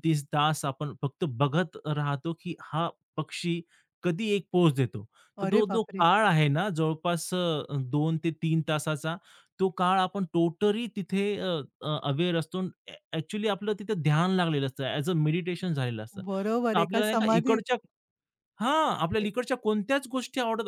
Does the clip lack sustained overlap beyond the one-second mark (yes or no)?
no